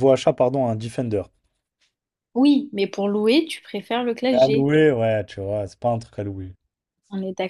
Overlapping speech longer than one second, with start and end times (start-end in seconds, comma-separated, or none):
none